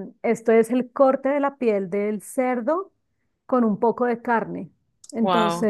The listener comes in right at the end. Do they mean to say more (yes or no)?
no